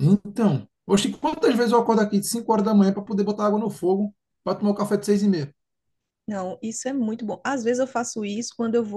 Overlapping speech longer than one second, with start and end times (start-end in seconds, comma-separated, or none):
none